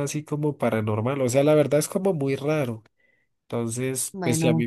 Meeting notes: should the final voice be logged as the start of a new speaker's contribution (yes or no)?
no